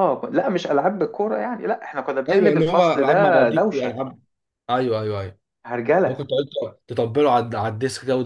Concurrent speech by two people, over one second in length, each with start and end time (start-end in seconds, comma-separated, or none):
2.3-4.0